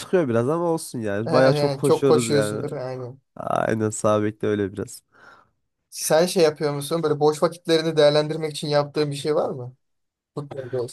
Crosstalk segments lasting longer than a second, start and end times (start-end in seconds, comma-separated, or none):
1.2-2.6